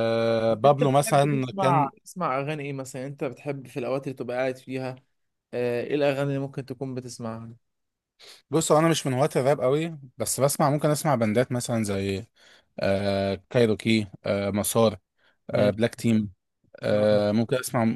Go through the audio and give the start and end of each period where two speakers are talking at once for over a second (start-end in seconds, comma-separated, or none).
0.5-1.9